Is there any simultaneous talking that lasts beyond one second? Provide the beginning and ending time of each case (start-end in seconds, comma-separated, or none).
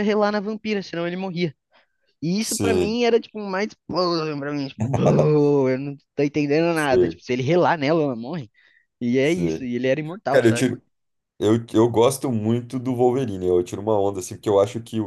none